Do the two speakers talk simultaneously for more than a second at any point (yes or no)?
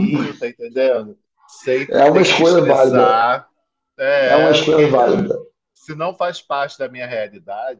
yes